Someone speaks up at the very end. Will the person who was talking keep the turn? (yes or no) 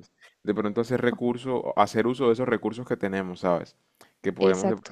yes